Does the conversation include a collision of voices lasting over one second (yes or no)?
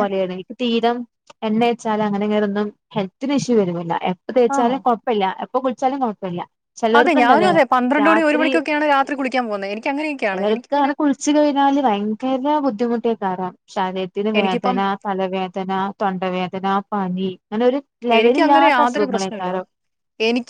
yes